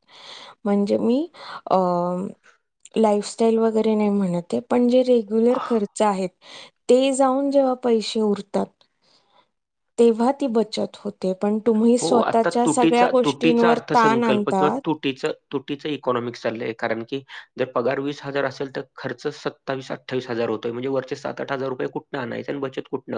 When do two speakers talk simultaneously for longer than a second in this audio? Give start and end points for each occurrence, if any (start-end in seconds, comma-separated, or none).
12.0-13.7